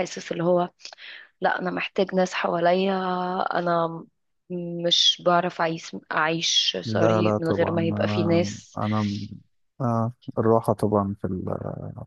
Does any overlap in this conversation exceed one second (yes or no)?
yes